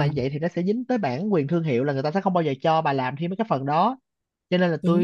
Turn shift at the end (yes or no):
no